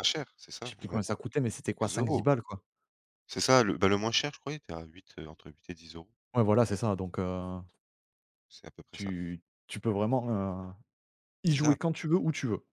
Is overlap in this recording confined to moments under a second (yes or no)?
yes